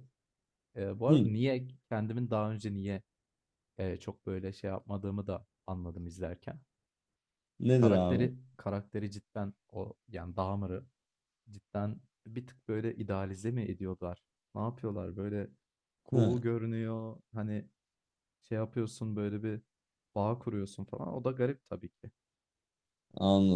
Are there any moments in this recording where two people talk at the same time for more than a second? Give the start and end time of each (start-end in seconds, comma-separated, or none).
none